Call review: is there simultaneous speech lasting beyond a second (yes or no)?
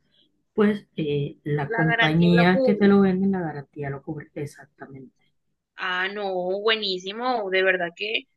yes